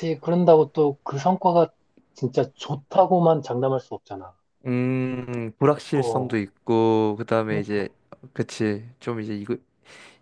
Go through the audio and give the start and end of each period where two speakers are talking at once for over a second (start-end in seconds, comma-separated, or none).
none